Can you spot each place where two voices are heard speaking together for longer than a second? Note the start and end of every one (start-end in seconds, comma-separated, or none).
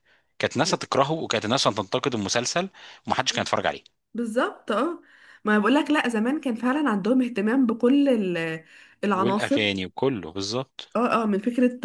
none